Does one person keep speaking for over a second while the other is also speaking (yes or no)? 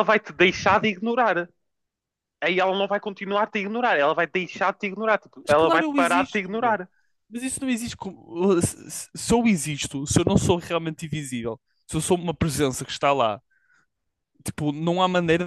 yes